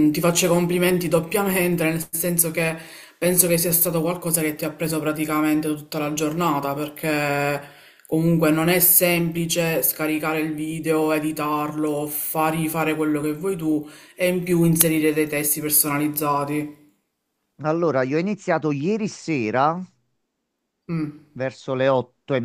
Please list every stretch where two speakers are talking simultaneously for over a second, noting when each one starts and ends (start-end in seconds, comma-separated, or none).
none